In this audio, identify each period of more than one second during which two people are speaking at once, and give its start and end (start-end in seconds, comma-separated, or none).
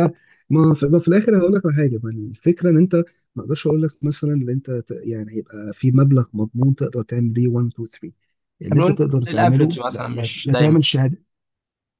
8.7-10.8